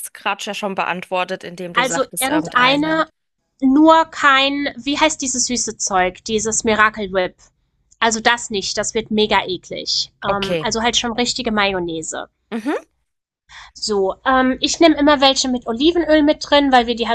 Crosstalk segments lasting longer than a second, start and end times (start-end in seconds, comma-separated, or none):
1.8-3.0